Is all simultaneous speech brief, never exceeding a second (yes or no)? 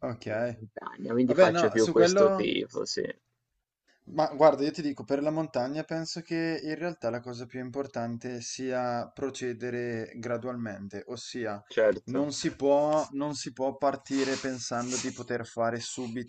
no